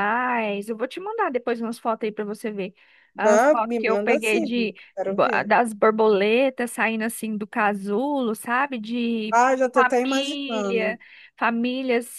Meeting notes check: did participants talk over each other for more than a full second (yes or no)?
yes